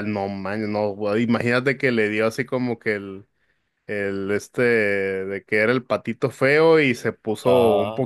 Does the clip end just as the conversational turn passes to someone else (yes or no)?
no